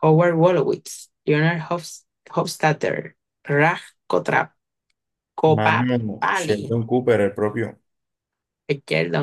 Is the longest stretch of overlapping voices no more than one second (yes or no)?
no